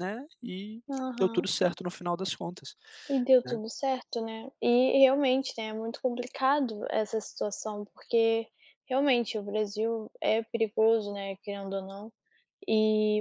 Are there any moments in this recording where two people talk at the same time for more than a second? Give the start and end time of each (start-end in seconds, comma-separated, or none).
none